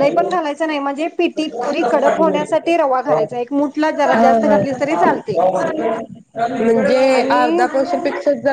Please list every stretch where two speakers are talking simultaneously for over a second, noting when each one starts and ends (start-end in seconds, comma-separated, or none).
4.1-5.4